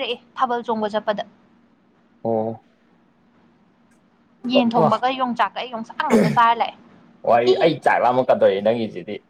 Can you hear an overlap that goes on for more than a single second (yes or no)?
no